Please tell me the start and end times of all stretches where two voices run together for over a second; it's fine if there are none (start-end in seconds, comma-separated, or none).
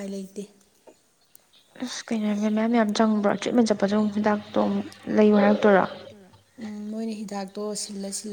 none